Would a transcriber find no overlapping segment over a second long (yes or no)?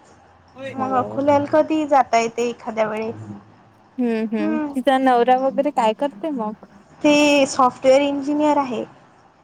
yes